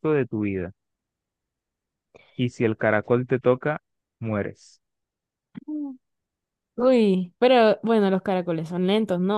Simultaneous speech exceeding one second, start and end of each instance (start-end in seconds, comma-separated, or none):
none